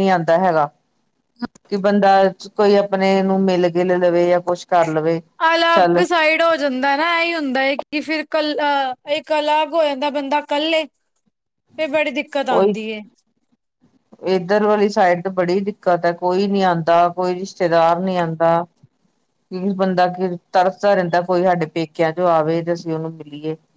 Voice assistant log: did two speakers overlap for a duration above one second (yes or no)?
no